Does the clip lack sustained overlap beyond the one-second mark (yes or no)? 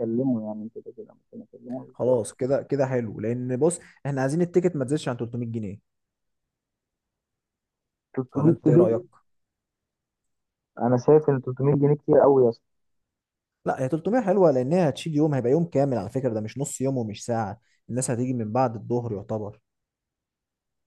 yes